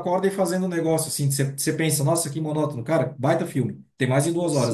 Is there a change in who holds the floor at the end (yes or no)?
yes